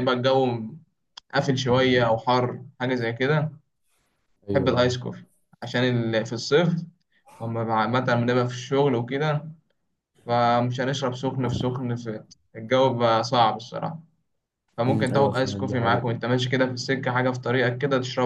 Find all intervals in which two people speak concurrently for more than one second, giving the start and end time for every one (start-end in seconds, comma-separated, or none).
14.9-16.1